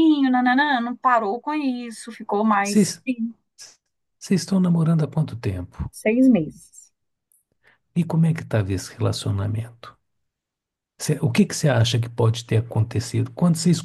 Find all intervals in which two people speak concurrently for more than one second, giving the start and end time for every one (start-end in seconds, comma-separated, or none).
none